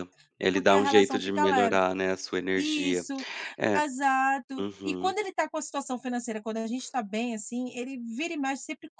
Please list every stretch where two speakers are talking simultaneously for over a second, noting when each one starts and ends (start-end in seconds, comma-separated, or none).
0.5-1.8